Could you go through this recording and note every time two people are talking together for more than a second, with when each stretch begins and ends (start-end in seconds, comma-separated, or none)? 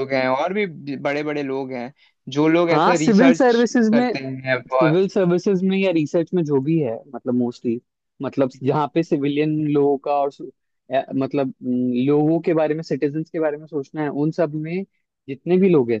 2.7-4.1